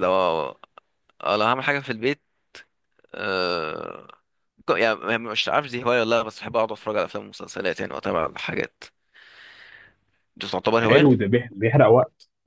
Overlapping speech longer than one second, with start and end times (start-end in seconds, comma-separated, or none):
none